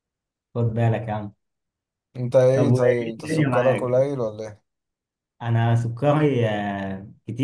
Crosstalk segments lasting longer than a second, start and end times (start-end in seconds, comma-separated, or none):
2.5-4.0